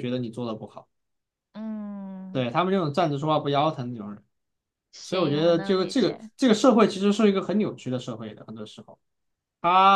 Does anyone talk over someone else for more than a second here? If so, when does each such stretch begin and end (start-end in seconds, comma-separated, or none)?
5.0-6.3